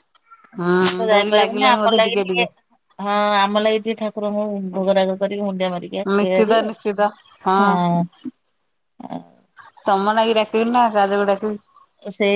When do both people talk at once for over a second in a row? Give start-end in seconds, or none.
0.6-2.0